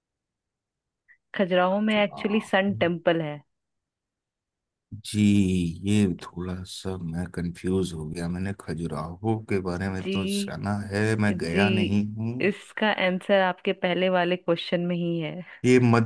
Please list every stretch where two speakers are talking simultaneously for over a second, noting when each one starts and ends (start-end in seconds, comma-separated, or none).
none